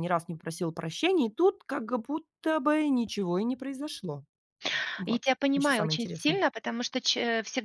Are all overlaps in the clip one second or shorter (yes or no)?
no